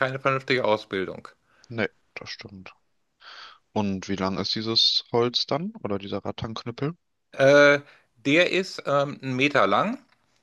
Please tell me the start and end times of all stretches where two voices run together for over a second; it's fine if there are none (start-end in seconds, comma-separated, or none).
none